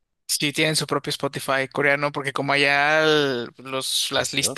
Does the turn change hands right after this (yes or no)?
no